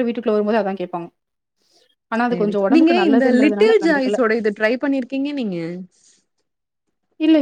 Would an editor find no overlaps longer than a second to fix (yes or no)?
no